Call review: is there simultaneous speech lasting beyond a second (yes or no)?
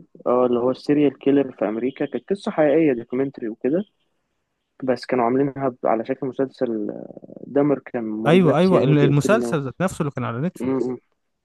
yes